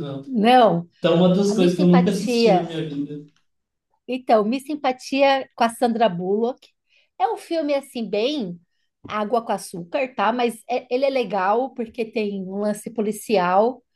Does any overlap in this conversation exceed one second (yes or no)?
yes